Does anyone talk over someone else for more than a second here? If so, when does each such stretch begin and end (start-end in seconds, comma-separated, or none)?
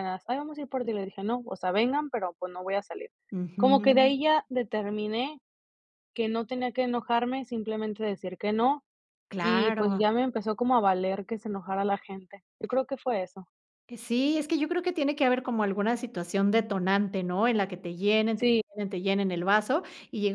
none